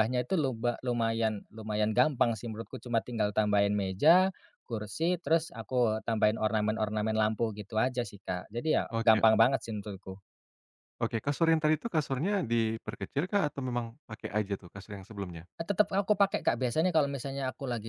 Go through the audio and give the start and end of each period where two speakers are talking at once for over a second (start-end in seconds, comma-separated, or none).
none